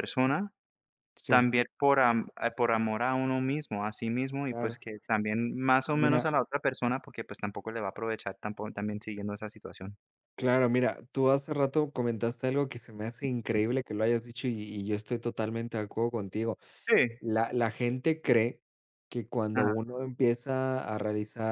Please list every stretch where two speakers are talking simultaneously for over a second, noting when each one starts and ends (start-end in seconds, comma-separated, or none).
none